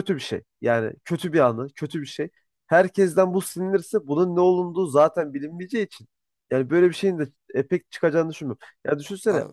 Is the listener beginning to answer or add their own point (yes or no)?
no